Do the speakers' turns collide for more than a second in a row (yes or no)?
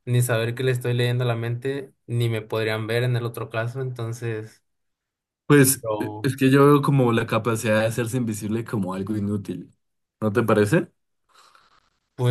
no